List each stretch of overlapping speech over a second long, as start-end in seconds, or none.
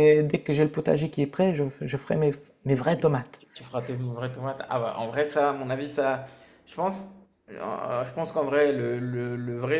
none